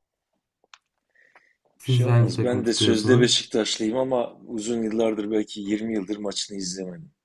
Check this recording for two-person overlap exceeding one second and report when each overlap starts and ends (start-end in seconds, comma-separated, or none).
1.8-3.5